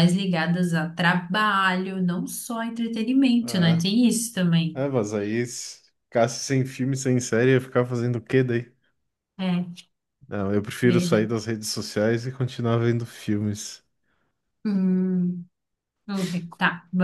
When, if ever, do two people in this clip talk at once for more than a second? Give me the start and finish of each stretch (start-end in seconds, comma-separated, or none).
none